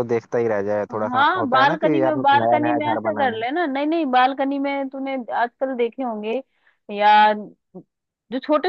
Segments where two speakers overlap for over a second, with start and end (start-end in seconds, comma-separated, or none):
0.9-3.4